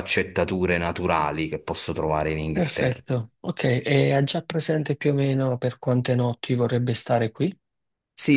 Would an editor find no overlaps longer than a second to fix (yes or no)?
yes